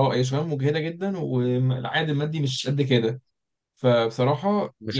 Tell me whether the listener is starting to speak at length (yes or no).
yes